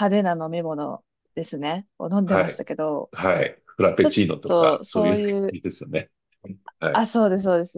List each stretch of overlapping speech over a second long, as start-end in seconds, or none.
4.0-5.6